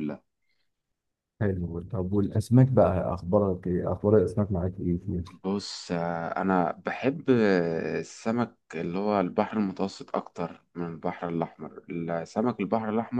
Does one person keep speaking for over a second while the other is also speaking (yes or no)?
no